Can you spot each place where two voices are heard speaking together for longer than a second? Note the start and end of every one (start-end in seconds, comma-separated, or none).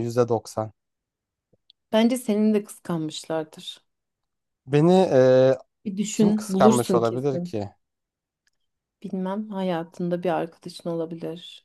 6.1-7.5